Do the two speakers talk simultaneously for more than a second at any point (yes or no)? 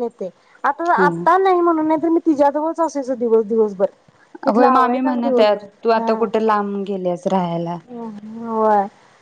yes